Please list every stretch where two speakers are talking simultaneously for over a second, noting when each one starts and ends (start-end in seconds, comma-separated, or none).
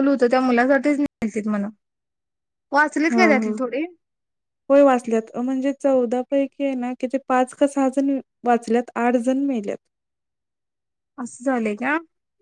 none